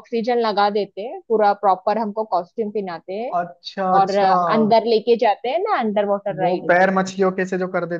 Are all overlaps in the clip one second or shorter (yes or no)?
yes